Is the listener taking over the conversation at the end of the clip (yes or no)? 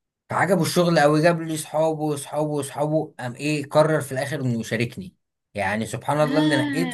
no